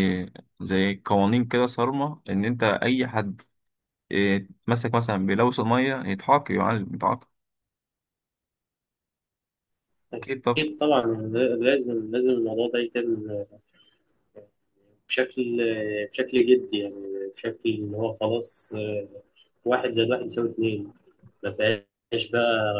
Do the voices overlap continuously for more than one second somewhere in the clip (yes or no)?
no